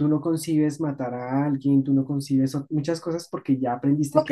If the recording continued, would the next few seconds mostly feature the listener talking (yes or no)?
yes